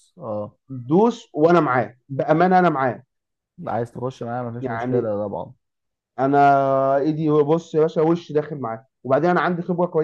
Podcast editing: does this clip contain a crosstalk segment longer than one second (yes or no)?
no